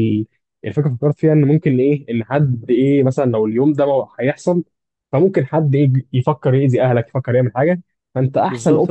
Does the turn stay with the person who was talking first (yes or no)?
no